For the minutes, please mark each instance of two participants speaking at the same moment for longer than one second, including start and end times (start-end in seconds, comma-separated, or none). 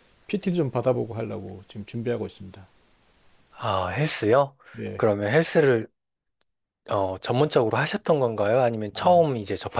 none